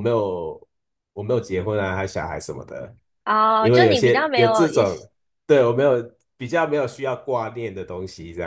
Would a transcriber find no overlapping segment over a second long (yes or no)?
no